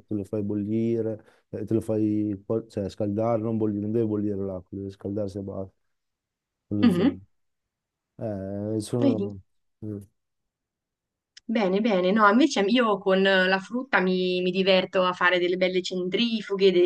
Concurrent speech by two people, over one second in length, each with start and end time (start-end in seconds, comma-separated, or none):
none